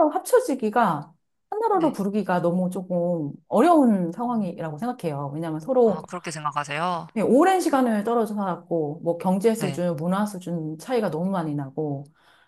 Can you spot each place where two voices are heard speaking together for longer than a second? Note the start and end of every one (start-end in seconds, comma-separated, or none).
none